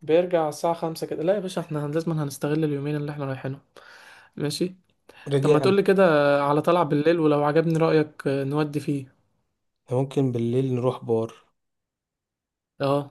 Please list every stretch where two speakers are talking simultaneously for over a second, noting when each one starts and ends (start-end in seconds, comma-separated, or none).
none